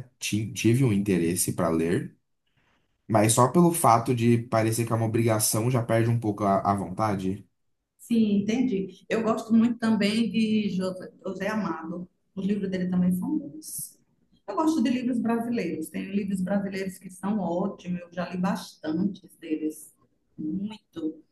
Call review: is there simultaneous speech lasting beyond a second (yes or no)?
no